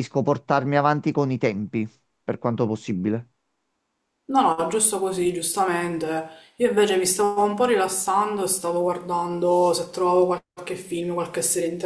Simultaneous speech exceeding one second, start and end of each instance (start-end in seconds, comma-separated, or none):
none